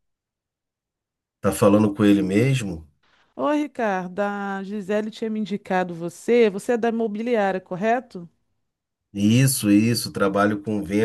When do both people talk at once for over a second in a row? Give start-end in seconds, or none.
none